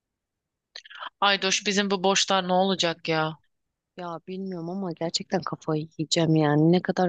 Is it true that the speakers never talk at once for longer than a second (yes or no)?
yes